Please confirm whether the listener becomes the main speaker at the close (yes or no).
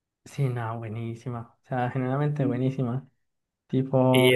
yes